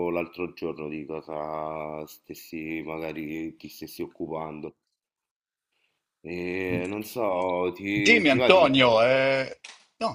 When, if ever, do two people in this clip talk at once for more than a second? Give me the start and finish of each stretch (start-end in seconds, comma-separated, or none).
none